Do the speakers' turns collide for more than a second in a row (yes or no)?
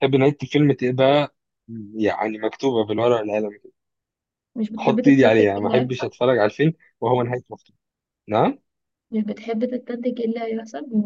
yes